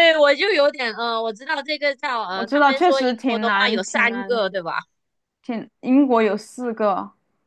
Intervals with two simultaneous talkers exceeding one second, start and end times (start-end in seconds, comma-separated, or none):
2.3-4.4